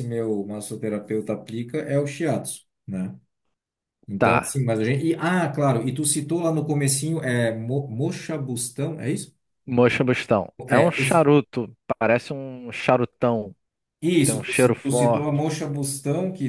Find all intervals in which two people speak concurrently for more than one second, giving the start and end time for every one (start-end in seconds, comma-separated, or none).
14.2-15.4